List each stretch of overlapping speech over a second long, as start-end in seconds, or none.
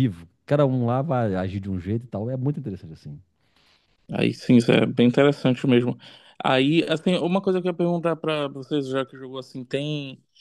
none